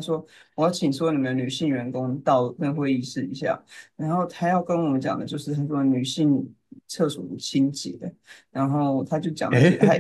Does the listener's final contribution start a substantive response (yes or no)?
no